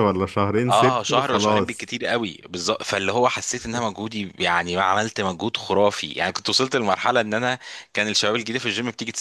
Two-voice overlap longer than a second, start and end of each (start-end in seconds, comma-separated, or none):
0.7-1.9